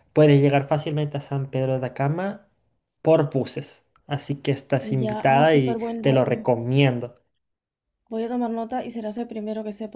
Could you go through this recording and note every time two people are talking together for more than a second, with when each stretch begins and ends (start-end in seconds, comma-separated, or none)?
5.0-6.5